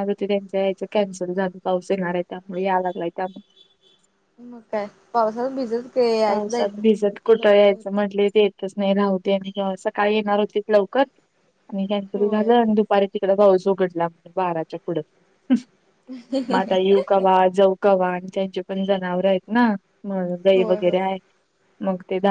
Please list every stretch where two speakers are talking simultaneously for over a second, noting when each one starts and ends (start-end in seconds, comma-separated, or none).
none